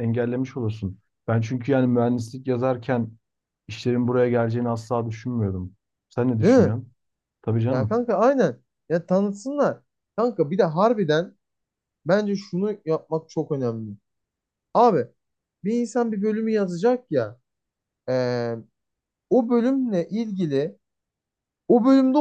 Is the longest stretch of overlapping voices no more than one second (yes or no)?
yes